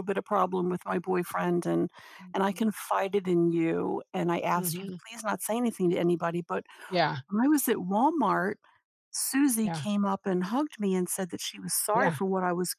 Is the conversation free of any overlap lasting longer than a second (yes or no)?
yes